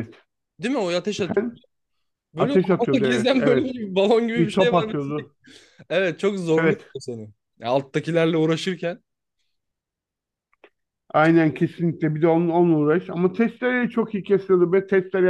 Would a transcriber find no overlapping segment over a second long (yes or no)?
no